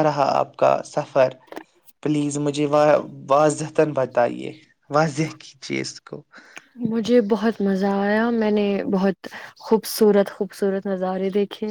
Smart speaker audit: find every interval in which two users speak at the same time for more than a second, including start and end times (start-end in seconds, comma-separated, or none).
none